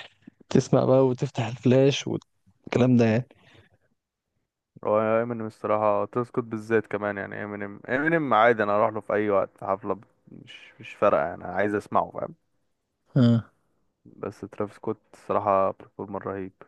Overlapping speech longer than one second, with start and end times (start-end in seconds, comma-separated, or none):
none